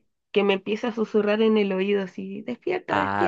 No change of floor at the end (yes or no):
no